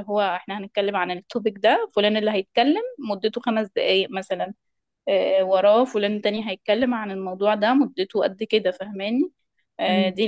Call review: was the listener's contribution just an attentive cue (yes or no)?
yes